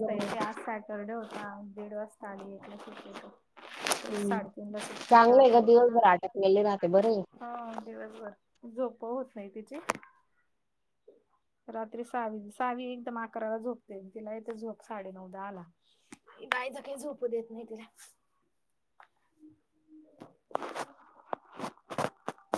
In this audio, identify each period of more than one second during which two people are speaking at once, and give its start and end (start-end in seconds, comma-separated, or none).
5.1-7.1